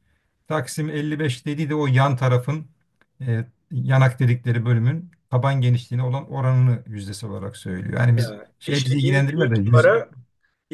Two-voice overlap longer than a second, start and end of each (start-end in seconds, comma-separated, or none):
8.2-9.9